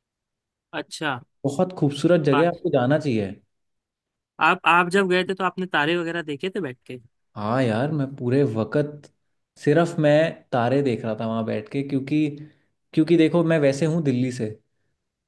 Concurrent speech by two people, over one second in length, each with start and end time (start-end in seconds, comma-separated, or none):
none